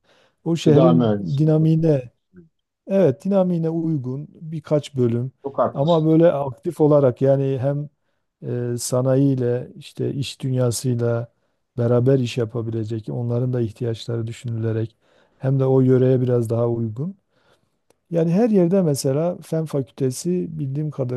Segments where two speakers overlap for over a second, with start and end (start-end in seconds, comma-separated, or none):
0.6-2.1